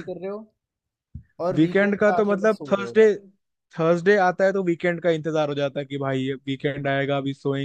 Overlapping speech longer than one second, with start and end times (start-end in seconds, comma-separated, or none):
1.5-3.0